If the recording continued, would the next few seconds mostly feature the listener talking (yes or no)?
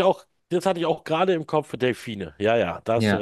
yes